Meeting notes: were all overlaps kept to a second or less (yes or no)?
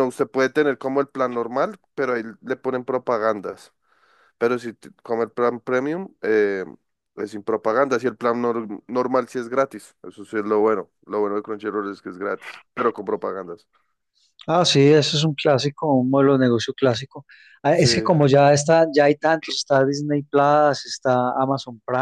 yes